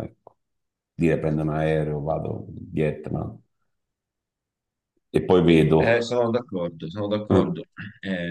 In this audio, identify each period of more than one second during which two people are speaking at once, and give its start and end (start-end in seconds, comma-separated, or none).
none